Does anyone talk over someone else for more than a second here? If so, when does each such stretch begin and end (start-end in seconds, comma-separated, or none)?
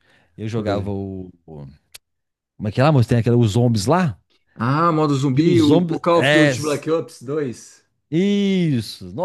5.4-6.8